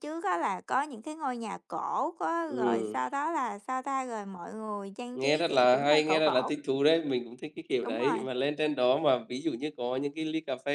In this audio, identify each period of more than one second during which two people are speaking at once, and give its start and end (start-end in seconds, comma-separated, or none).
5.1-6.5